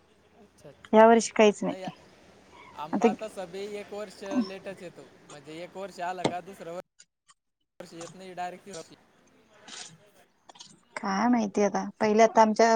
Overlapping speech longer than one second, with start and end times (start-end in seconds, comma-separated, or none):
none